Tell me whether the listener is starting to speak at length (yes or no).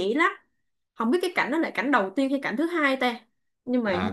yes